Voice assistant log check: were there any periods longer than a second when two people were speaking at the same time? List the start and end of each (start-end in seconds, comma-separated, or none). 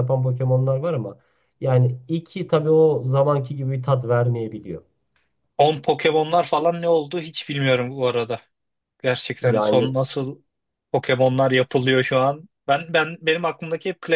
none